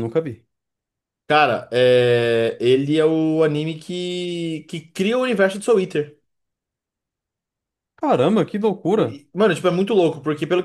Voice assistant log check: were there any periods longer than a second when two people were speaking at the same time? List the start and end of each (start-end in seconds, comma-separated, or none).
none